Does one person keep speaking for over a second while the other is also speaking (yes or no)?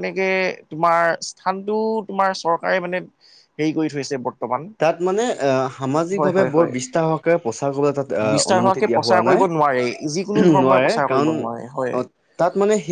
yes